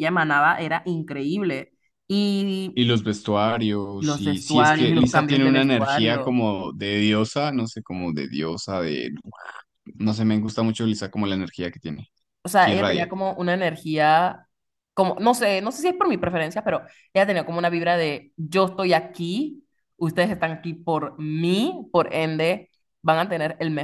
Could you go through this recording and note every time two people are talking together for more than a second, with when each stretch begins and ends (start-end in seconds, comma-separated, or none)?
4.0-6.3